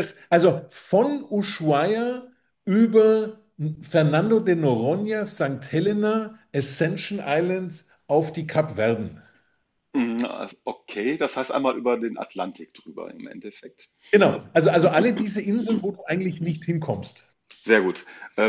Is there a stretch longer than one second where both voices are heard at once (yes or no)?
no